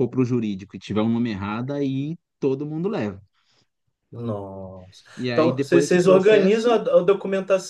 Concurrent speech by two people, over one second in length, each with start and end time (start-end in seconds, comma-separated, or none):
5.2-6.8